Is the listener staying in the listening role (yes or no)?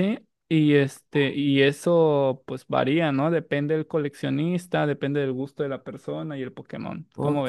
no